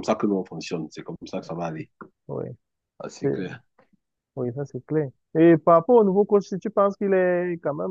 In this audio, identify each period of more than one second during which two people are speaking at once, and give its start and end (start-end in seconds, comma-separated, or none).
none